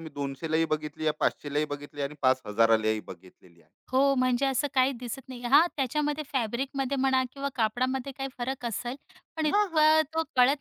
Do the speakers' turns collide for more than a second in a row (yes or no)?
no